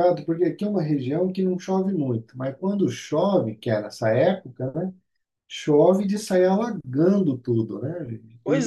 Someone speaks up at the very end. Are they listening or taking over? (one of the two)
taking over